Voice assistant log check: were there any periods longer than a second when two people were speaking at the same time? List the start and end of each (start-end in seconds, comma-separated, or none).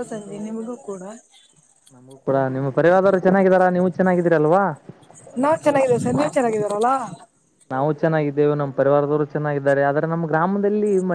none